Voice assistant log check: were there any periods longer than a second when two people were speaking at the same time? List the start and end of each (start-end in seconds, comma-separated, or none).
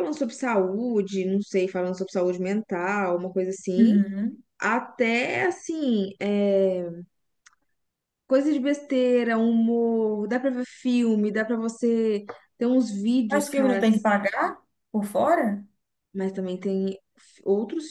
none